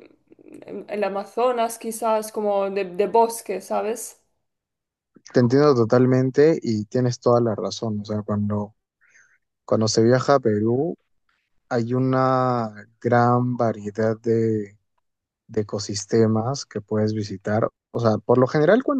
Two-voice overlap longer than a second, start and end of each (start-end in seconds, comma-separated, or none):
none